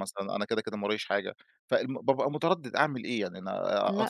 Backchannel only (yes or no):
yes